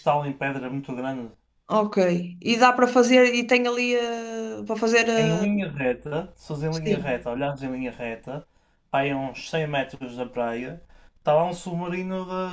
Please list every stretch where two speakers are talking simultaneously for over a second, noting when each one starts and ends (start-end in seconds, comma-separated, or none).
none